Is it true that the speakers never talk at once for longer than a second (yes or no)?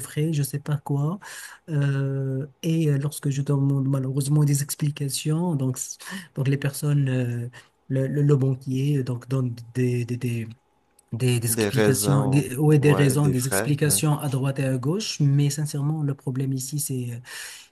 no